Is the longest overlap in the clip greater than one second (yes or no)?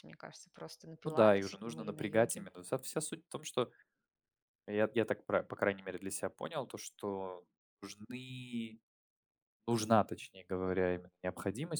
yes